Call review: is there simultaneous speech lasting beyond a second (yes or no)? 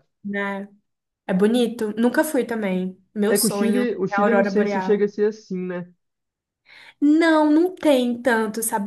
yes